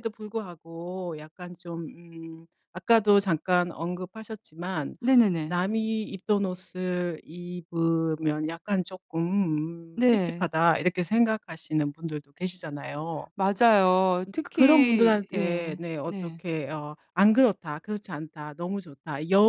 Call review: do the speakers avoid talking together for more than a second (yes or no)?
no